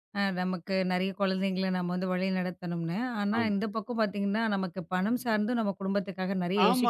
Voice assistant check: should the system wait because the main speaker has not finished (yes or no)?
no